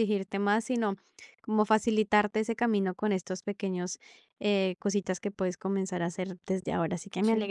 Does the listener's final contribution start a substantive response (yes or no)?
no